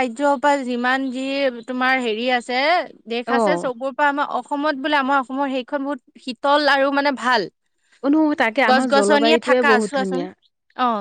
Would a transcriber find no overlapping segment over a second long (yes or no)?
no